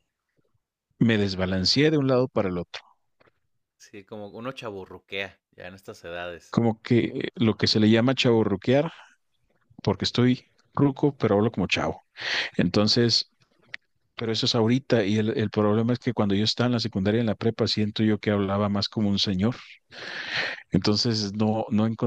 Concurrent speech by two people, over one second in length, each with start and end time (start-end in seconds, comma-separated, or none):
none